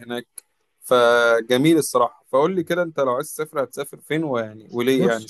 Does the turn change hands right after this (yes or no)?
yes